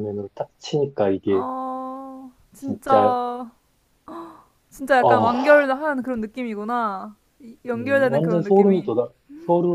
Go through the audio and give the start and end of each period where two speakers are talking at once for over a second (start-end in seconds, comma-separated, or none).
7.7-8.9